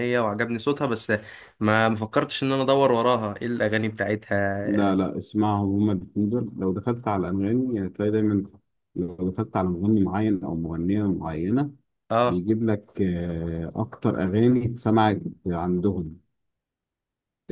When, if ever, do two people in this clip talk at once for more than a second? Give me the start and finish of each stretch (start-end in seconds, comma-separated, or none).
none